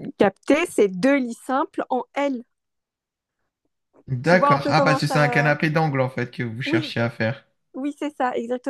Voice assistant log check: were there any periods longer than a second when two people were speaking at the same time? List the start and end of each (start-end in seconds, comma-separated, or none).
4.2-5.5